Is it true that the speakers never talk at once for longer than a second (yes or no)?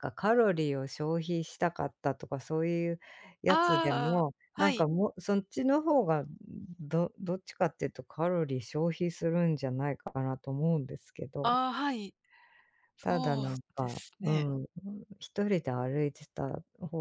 no